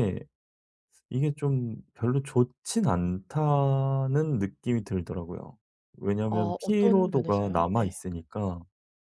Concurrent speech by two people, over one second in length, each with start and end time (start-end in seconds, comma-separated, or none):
6.2-8.0